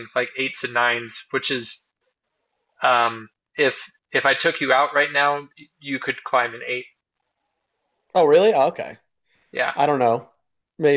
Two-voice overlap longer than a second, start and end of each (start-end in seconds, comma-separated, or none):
none